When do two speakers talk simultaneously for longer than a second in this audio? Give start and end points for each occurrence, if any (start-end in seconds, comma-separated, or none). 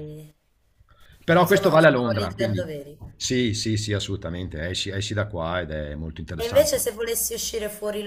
1.4-2.6